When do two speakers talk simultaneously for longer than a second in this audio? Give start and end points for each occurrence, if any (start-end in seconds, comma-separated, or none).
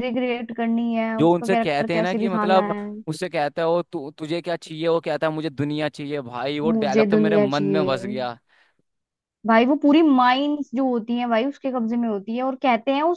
1.2-2.8, 6.6-7.9